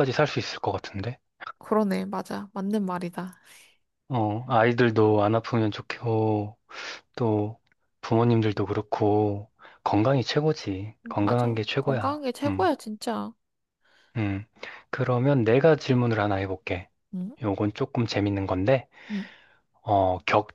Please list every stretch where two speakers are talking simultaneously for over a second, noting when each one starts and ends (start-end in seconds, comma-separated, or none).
11.1-12.7